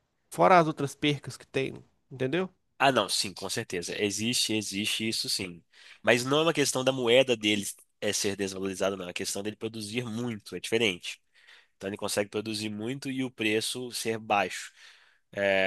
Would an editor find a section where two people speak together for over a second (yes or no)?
no